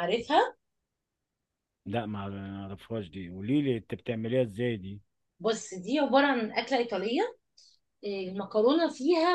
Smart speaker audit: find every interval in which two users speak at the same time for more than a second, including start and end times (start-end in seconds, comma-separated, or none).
none